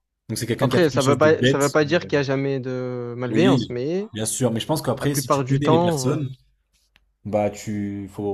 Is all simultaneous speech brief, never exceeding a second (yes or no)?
no